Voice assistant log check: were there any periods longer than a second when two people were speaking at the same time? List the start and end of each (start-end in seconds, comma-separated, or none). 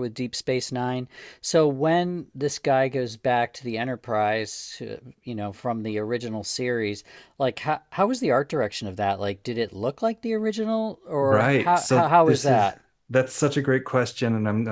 11.2-12.8